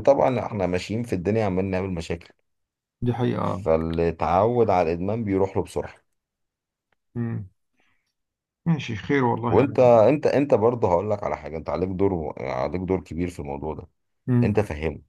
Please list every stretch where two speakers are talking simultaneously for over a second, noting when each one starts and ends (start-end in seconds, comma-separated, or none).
none